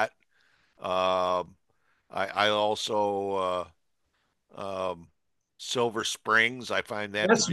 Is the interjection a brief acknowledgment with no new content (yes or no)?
no